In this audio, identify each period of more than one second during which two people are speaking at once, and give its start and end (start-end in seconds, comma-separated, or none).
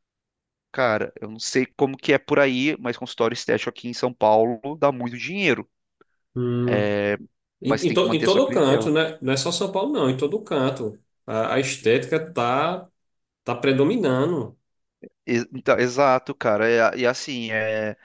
7.6-8.9